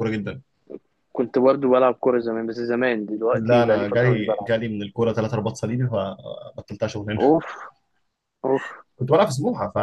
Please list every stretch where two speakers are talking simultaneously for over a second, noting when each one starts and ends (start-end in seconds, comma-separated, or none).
3.3-4.5